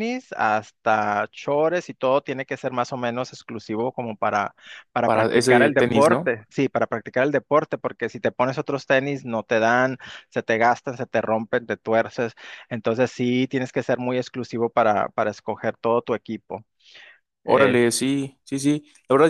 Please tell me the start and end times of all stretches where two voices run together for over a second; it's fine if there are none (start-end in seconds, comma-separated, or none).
5.0-6.3